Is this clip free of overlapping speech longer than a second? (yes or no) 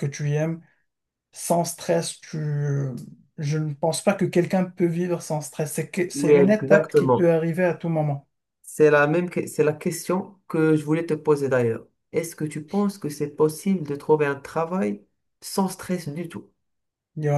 no